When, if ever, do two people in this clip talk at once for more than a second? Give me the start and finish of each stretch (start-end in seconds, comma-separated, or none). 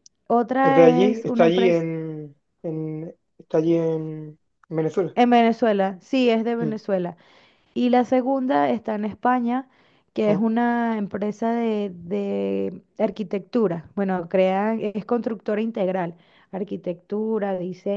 0.6-1.9